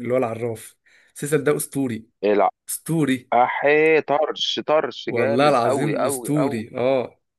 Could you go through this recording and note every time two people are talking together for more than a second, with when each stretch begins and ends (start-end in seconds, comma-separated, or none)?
5.1-6.7